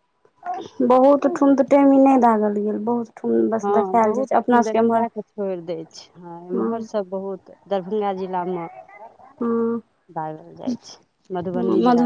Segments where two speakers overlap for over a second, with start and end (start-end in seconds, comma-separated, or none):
3.6-5.0